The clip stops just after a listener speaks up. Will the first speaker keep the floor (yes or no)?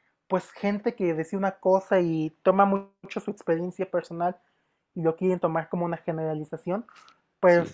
yes